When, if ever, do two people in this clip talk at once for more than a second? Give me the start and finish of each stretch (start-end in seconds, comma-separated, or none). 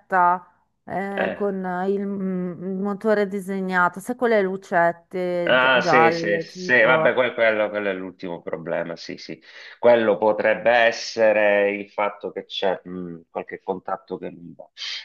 5.5-7.1